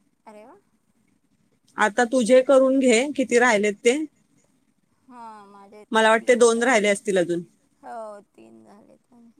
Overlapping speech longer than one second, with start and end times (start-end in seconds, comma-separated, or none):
none